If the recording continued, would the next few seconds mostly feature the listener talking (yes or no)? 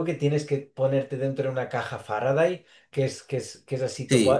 yes